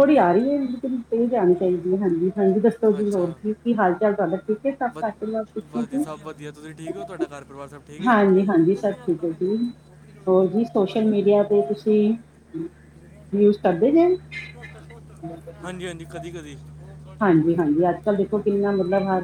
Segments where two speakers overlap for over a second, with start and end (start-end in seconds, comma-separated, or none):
none